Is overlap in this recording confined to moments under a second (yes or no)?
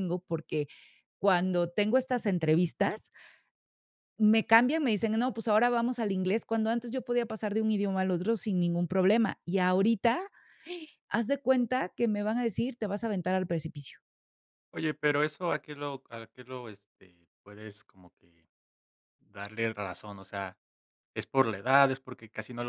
yes